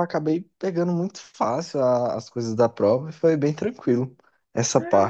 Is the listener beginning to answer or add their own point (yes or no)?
yes